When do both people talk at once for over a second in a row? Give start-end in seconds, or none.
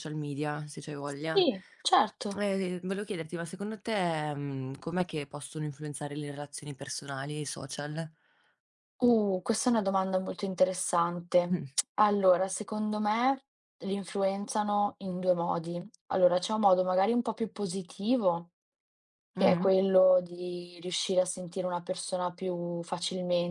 none